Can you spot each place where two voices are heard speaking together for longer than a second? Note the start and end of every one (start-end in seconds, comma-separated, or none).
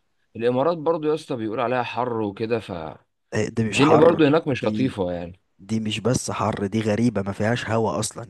3.3-5.0